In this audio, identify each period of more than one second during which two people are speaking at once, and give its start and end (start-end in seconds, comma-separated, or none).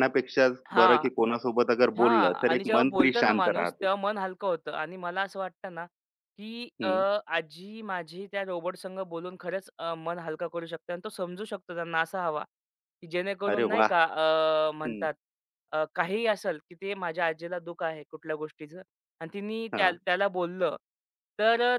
2.0-3.9